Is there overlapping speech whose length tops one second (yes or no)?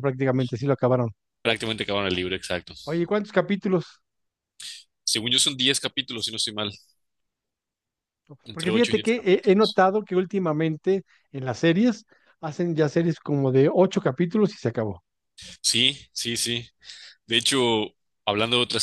yes